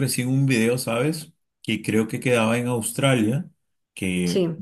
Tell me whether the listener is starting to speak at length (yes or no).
no